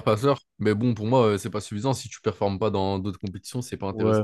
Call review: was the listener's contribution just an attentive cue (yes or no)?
no